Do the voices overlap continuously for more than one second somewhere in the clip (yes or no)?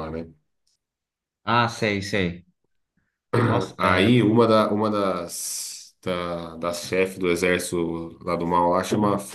no